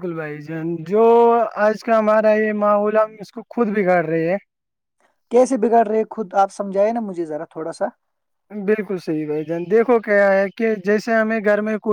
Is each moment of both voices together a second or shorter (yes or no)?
yes